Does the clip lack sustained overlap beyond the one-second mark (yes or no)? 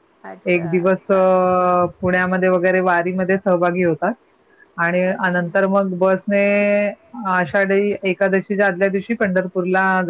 yes